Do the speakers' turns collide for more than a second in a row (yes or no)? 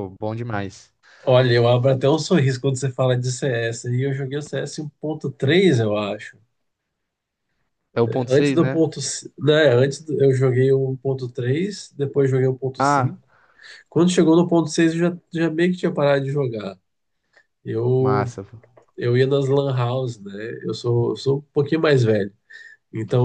no